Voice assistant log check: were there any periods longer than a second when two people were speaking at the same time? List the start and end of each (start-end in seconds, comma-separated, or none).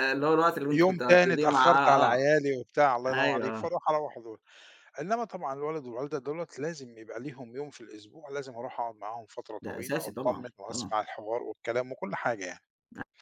0.7-2.3, 9.6-11.0